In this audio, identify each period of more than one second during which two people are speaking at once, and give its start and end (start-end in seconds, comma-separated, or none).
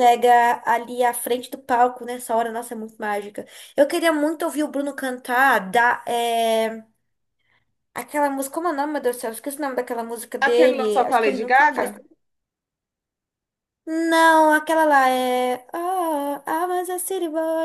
10.4-11.9